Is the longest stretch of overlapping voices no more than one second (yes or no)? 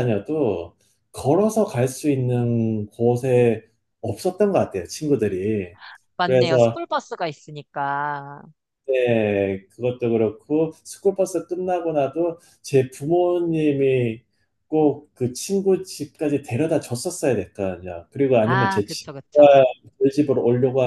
no